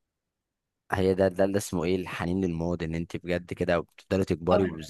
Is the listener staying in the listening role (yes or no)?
yes